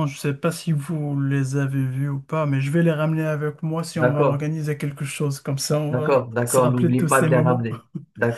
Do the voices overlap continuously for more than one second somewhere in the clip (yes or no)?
yes